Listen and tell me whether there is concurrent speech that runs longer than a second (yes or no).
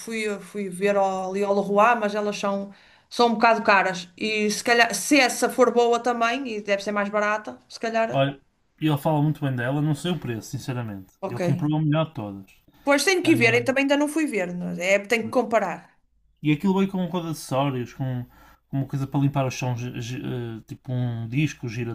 no